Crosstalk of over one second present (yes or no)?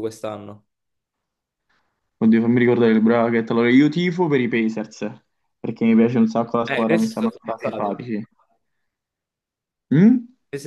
yes